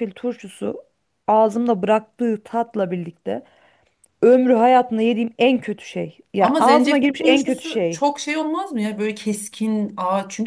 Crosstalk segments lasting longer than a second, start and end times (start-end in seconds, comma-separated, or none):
6.4-8.0